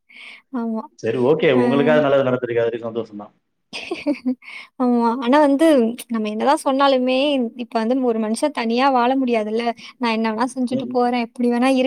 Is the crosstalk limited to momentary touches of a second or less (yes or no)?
yes